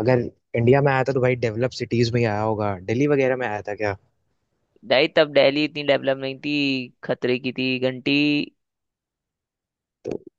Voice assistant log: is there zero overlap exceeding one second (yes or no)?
yes